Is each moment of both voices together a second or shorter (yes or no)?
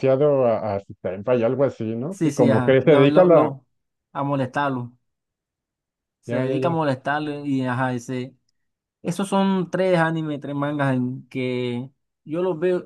no